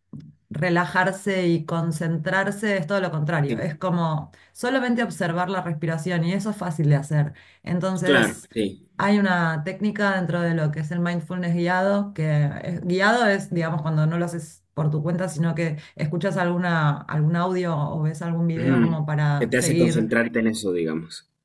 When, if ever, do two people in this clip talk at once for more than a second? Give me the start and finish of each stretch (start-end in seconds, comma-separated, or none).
18.6-20.1